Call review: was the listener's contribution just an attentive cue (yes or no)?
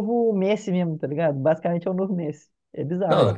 no